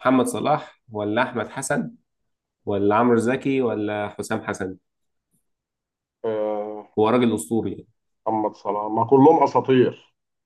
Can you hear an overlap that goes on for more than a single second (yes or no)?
no